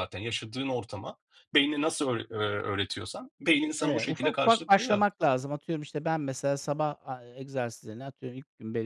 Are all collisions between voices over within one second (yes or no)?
no